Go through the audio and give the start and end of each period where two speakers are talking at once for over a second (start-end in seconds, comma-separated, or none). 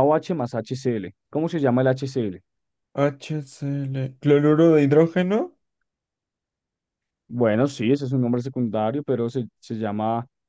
none